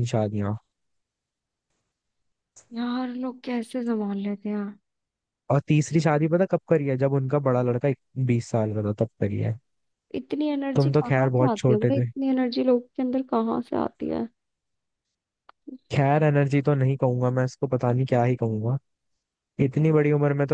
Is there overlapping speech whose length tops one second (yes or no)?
yes